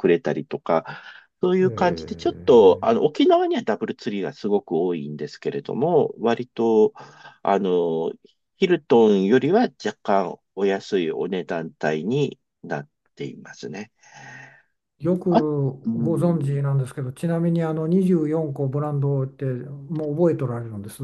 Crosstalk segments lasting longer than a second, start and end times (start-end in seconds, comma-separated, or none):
1.6-3.0